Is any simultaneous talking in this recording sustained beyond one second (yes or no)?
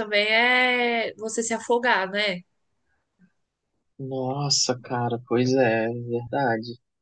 no